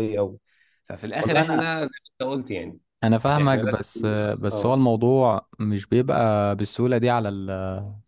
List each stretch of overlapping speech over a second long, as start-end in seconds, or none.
none